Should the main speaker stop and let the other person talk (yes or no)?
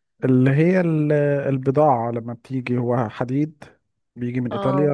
no